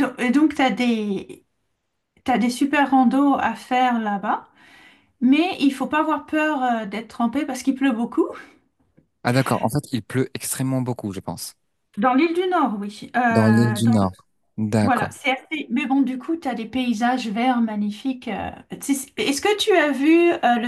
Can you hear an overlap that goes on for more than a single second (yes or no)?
no